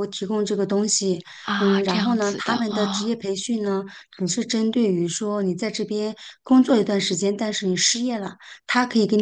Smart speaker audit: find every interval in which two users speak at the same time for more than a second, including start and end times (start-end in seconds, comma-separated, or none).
1.6-3.2